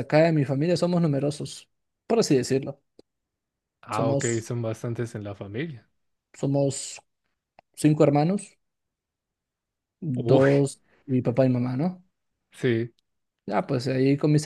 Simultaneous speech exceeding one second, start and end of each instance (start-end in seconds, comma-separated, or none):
none